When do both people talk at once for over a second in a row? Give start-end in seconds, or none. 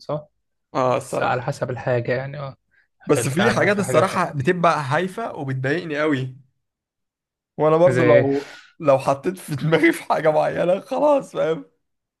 3.1-4.4